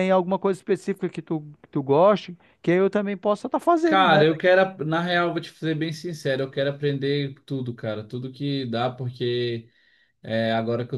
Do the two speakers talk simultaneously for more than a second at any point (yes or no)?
no